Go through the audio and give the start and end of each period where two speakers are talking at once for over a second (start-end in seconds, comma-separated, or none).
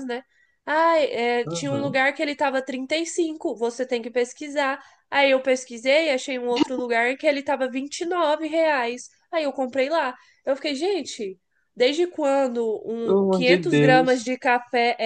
13.0-14.3